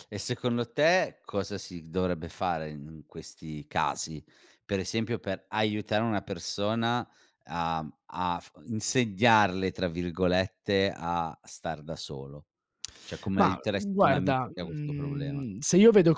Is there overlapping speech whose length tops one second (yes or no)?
yes